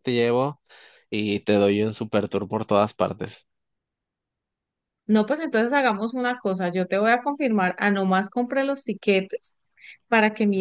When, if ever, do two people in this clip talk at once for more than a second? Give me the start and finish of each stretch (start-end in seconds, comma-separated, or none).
none